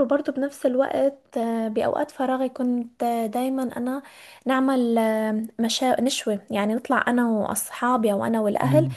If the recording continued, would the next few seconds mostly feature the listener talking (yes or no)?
no